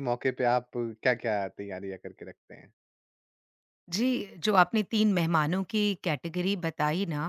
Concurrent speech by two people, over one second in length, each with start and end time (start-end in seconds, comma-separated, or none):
none